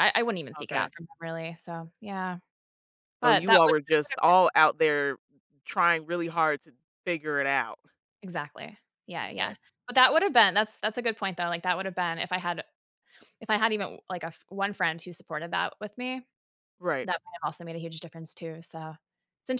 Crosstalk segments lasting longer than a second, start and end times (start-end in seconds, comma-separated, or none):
3.2-4.5